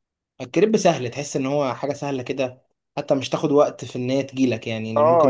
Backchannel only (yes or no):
no